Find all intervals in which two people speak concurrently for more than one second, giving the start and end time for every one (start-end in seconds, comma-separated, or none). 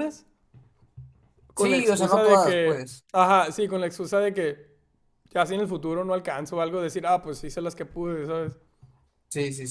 1.6-3.0